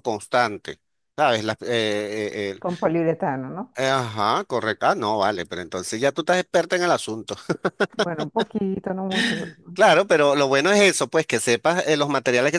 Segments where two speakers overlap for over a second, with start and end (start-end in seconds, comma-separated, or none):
none